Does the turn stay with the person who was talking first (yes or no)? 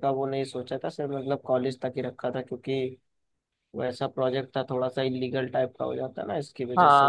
no